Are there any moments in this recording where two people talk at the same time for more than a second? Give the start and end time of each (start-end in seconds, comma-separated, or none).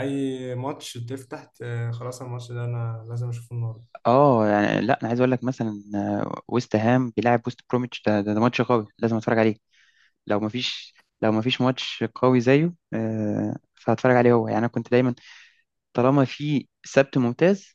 none